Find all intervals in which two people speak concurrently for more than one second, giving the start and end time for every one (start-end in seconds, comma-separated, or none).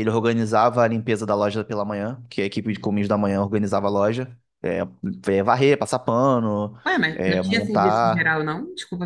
7.1-8.4